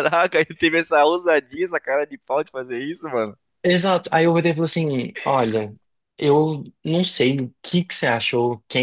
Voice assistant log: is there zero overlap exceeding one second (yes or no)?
yes